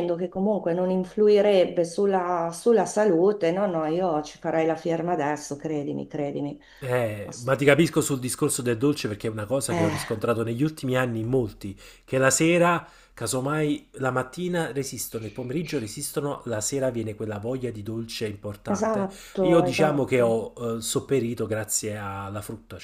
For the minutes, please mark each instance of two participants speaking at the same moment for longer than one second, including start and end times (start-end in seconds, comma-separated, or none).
18.6-20.4